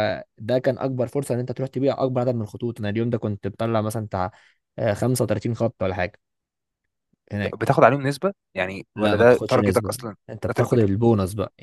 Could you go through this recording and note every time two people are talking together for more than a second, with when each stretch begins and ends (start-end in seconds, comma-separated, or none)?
8.9-10.9